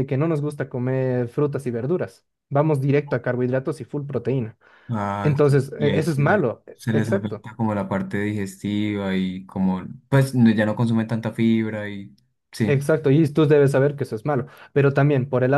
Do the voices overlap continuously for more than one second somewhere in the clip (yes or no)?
yes